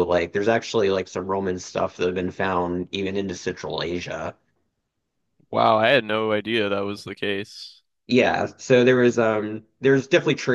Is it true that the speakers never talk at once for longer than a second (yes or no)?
yes